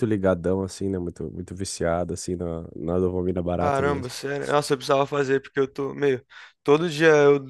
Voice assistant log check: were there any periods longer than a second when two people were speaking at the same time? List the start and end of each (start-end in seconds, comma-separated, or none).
none